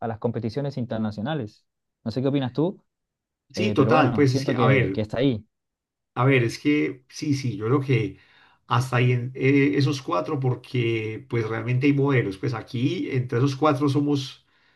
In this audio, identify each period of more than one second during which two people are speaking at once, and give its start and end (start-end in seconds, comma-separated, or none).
3.5-5.0